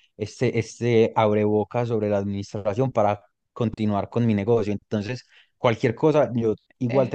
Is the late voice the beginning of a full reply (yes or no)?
no